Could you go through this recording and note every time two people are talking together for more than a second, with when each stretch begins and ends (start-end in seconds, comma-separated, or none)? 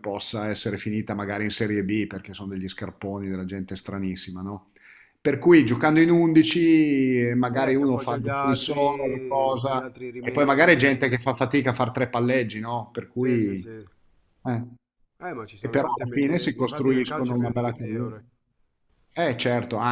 7.5-10.8, 15.6-18.1